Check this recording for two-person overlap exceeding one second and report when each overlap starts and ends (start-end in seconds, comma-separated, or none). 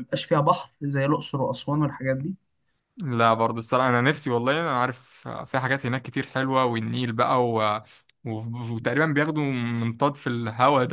none